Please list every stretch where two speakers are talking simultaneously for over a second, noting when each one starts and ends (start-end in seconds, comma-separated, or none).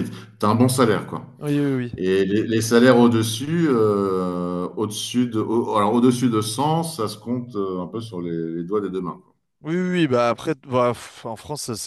none